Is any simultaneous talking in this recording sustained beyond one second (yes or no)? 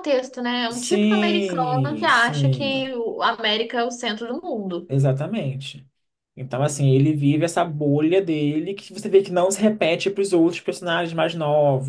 yes